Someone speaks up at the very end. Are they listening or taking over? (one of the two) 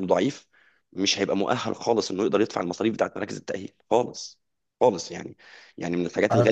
listening